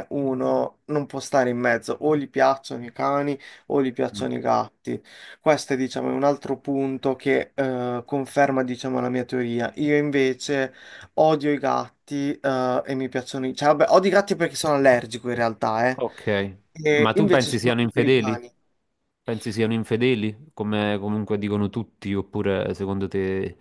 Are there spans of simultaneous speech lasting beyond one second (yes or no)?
yes